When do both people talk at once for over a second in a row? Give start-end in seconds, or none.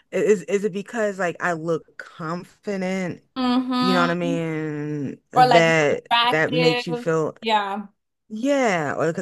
5.3-7.0